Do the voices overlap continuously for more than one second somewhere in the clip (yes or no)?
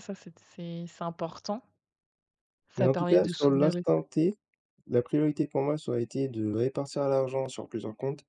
yes